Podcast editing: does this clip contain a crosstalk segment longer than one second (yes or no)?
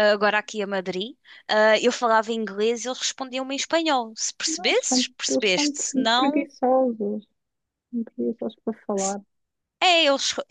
yes